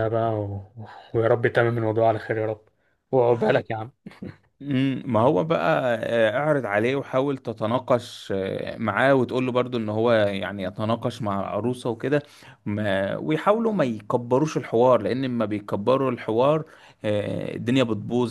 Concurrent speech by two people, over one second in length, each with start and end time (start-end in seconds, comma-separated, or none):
none